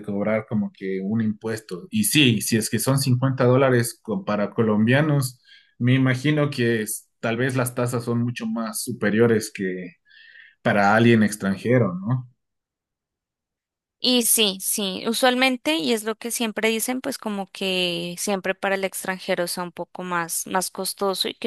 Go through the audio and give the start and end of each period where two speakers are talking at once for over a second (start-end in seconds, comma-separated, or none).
none